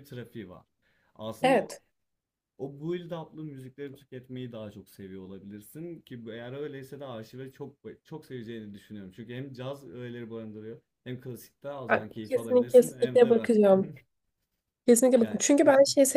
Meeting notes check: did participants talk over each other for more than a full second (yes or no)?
yes